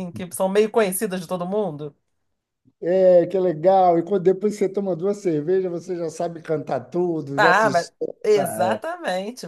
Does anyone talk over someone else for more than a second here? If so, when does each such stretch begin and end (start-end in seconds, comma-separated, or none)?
7.3-8.8